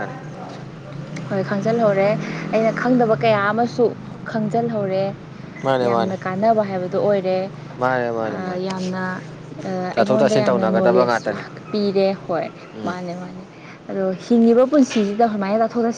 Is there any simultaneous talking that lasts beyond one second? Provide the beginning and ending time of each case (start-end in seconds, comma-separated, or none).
9.9-11.4